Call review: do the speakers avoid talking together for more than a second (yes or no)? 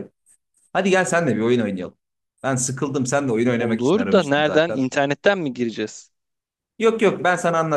no